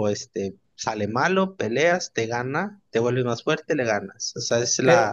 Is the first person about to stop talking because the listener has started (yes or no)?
yes